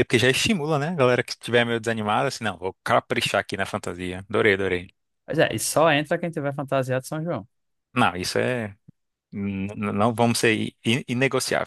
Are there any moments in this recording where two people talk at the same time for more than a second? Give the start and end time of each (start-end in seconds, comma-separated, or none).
none